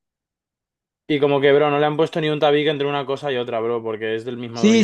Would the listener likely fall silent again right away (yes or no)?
no